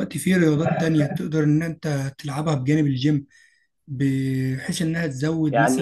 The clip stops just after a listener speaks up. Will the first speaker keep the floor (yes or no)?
yes